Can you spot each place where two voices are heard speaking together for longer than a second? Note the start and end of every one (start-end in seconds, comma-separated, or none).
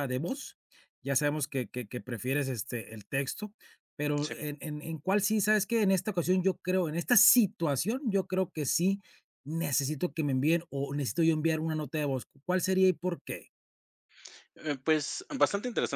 none